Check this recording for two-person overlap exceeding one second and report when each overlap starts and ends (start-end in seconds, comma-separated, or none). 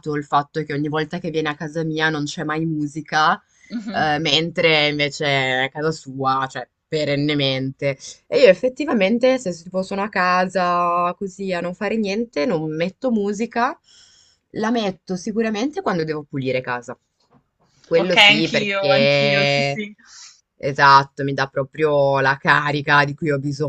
18.0-19.8